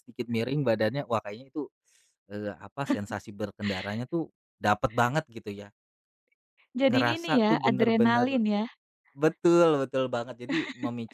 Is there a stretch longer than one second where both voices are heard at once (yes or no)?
yes